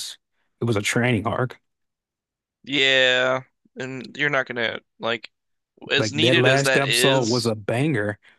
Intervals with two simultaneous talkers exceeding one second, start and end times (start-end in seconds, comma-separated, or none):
6.0-7.5